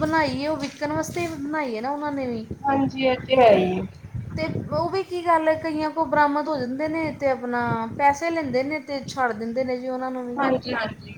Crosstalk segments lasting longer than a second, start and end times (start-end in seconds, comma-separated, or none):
none